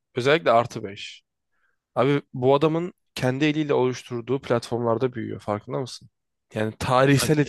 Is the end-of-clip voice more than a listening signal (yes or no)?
no